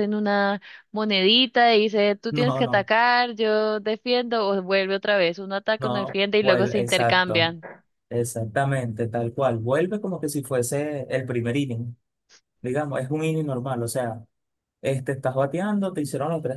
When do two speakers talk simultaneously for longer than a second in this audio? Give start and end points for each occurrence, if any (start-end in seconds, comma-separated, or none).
5.8-7.6